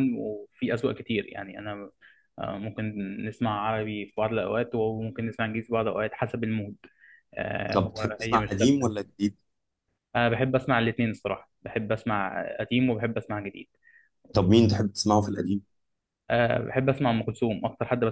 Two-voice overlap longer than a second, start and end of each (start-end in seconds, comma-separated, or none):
7.7-9.0